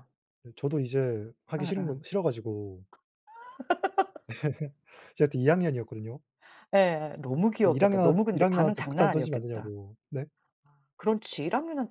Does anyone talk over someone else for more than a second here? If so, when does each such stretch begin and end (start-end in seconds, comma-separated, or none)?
7.6-9.7